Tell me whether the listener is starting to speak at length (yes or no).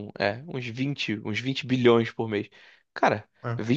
no